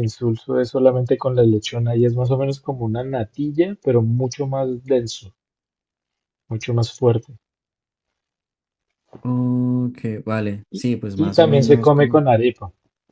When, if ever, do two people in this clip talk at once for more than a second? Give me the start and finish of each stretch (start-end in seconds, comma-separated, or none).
10.7-12.2